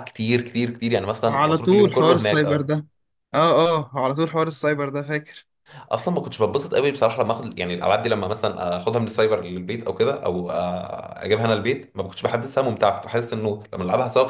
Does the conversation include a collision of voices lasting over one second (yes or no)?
yes